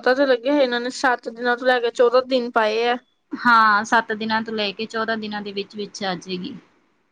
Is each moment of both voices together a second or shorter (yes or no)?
yes